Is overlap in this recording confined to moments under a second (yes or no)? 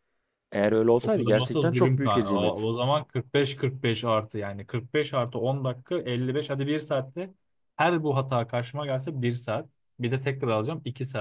no